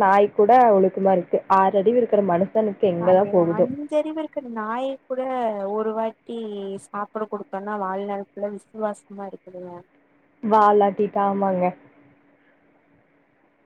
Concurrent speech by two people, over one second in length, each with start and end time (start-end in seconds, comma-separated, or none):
none